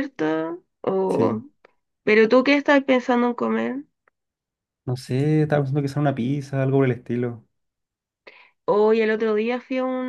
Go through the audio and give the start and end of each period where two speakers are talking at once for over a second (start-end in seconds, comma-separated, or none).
none